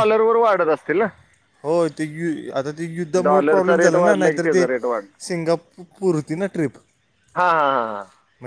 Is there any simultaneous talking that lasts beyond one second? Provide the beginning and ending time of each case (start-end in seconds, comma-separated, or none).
3.2-4.6